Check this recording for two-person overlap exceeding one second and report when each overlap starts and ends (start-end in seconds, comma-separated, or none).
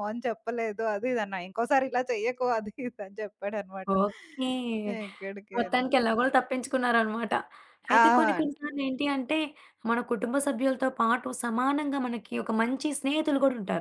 none